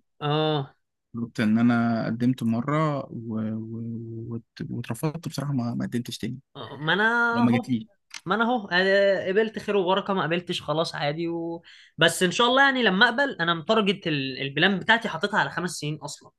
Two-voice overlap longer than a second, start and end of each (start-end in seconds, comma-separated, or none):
none